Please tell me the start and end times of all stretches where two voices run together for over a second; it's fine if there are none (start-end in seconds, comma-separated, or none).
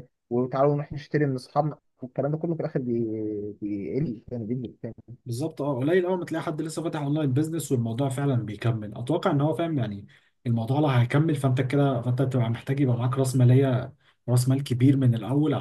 none